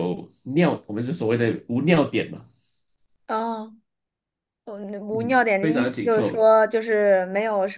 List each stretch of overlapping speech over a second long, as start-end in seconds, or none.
5.1-6.5